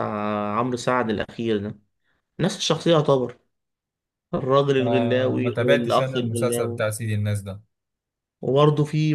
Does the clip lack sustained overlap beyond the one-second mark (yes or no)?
no